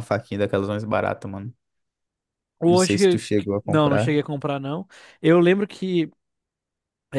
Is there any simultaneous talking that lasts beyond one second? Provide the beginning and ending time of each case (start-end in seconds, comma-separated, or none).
2.6-4.2